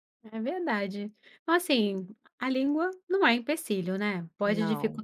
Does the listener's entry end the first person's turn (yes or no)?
no